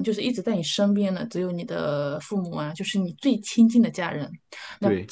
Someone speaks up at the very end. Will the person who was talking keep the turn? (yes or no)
yes